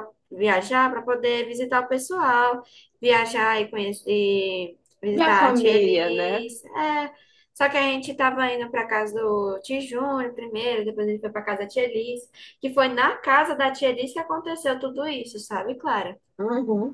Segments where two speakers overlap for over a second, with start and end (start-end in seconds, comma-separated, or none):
5.1-6.5